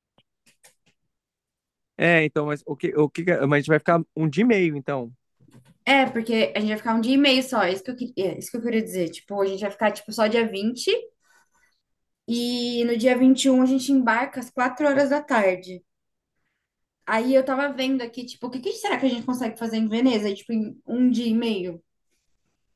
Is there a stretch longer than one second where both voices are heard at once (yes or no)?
no